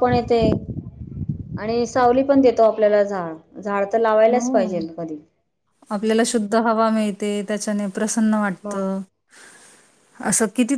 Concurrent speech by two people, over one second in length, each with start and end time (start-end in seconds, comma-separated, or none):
none